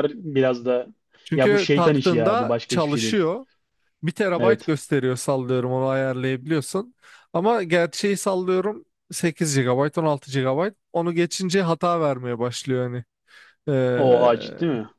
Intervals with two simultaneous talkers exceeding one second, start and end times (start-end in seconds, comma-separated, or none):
1.3-3.2